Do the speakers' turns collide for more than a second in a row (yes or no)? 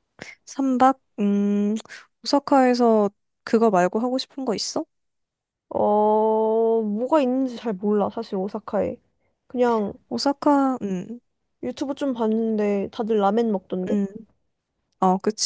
no